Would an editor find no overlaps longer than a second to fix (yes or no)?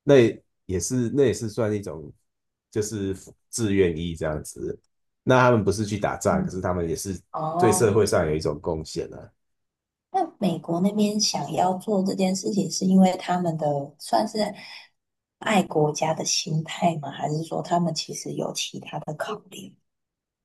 yes